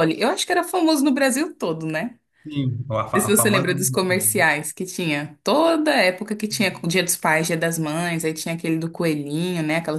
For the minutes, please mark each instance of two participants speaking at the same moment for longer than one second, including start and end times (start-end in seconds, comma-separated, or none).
3.1-4.5